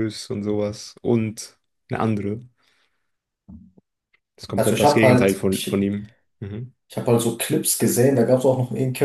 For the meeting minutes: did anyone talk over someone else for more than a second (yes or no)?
yes